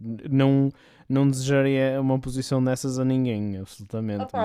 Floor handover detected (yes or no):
yes